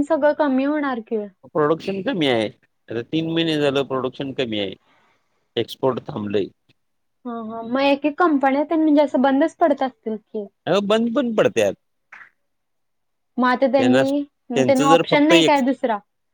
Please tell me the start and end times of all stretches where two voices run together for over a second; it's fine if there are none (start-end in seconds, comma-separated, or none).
13.8-15.6